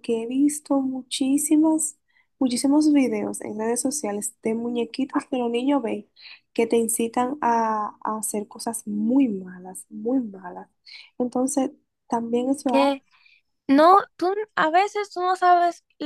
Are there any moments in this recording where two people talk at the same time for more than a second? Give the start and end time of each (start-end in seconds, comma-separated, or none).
none